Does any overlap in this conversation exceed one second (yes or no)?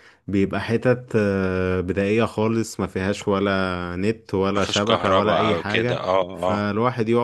yes